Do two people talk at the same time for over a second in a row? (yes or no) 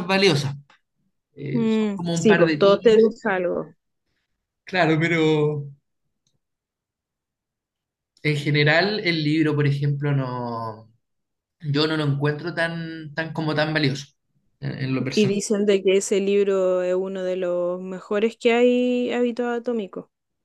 yes